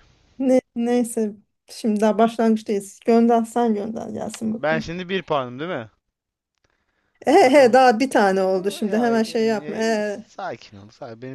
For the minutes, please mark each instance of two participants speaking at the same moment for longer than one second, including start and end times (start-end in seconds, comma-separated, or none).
8.8-10.2